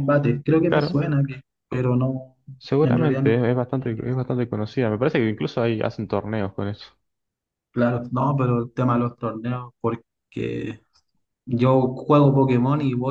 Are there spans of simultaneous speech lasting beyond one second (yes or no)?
yes